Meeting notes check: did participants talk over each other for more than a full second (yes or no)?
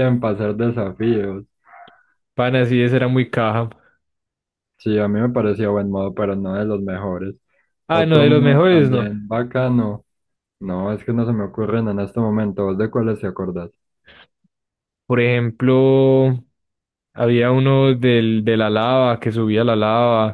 yes